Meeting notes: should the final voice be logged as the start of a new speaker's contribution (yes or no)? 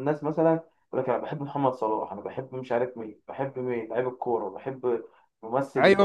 yes